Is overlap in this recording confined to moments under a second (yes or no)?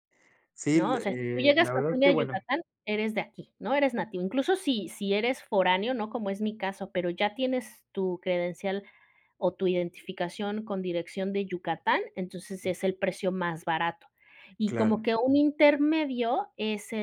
no